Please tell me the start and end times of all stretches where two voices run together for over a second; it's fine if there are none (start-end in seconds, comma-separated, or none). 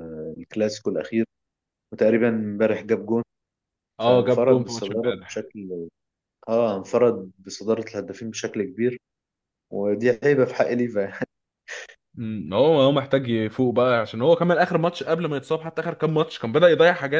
4.0-5.5